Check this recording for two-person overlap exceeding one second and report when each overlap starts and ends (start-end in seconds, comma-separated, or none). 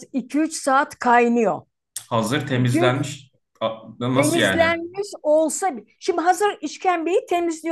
none